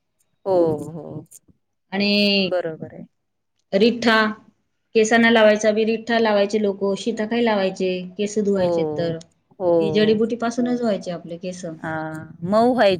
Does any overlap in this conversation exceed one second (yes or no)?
no